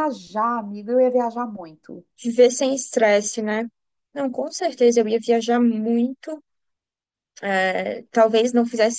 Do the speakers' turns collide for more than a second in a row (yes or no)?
no